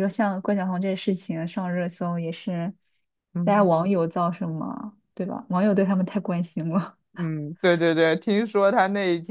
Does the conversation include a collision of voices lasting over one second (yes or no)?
no